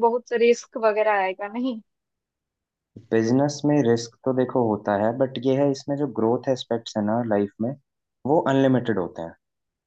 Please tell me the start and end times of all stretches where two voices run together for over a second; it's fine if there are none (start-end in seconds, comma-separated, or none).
none